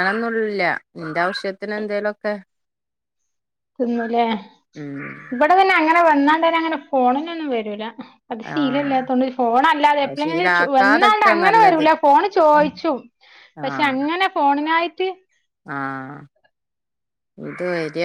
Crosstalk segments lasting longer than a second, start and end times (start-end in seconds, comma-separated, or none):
10.0-11.9